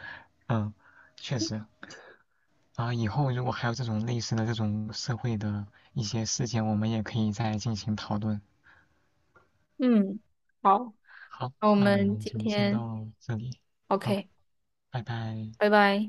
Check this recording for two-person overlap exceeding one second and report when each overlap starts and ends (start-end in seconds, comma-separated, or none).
11.6-12.9